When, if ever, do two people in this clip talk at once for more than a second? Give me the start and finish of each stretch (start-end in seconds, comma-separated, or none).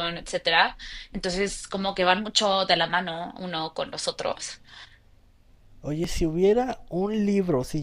none